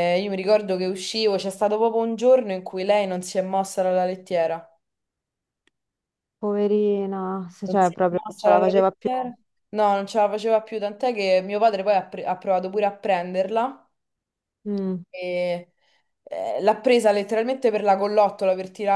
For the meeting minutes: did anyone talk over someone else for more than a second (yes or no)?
yes